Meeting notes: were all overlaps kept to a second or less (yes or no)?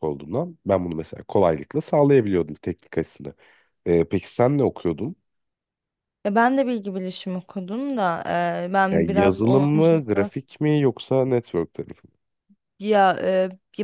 no